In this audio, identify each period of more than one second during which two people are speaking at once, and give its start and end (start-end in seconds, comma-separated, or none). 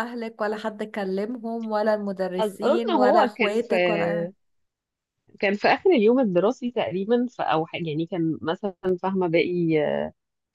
2.4-3.7